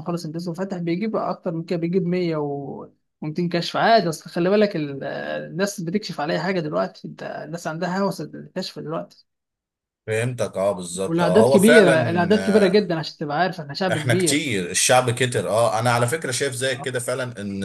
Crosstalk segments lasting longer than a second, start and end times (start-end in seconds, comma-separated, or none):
11.1-12.9